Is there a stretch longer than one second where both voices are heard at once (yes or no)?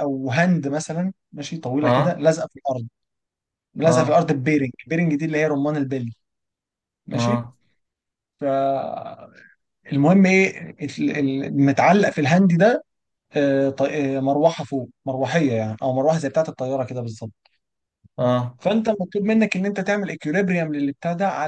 no